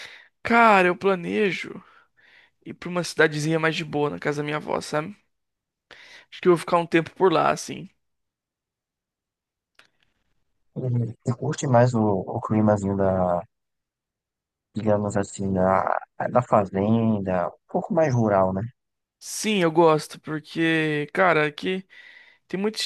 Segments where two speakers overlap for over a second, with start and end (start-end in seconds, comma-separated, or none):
none